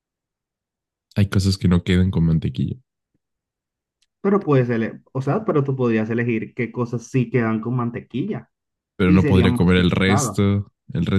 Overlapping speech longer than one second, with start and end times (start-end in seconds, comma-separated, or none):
9.1-10.4